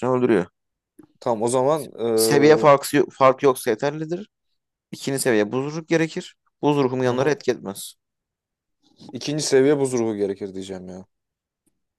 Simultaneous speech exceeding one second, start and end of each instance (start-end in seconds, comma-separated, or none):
none